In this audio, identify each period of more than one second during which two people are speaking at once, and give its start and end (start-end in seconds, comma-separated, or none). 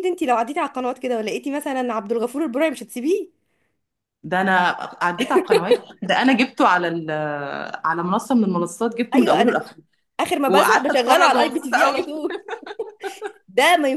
10.5-12.1